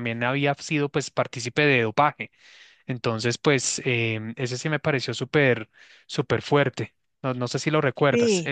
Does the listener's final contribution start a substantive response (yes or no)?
yes